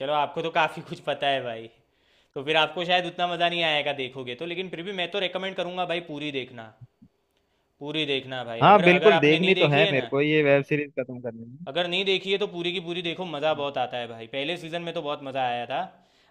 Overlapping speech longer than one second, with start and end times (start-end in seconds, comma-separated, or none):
8.6-10.1